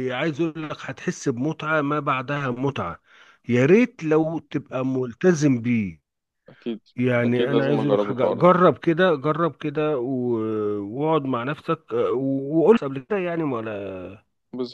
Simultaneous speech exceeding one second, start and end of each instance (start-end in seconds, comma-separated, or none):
7.2-8.5